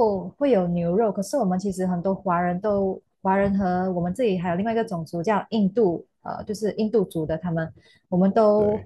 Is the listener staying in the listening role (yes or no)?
yes